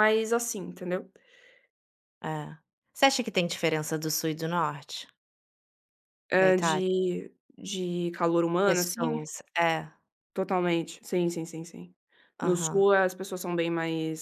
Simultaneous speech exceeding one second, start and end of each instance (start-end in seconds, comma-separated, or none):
none